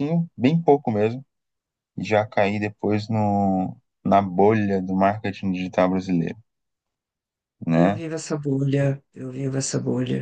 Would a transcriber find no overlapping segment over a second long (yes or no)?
yes